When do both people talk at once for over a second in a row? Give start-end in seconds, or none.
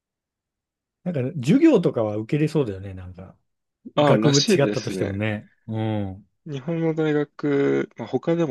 4.0-5.2